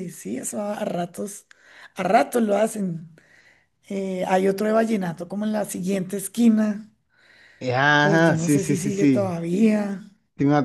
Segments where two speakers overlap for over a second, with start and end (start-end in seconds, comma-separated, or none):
8.0-9.3